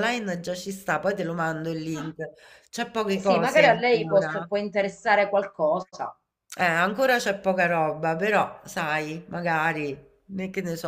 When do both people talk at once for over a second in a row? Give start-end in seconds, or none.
3.1-4.5